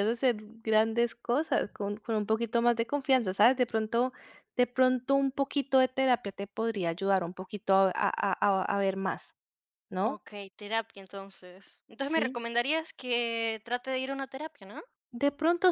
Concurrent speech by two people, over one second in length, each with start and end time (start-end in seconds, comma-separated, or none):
none